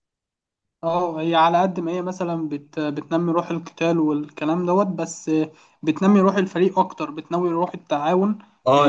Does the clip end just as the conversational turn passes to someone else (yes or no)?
yes